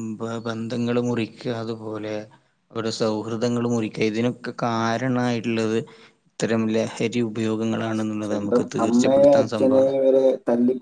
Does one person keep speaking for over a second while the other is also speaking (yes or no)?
yes